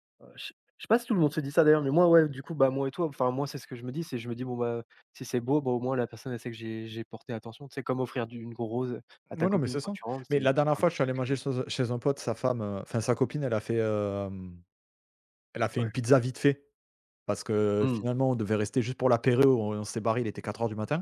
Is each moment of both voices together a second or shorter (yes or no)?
no